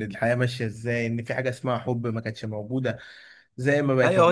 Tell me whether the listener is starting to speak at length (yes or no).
yes